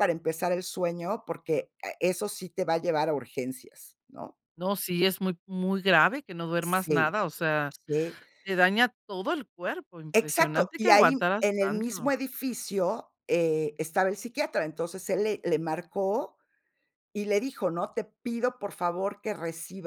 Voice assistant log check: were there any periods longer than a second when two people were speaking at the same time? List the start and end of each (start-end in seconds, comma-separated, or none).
10.1-12.1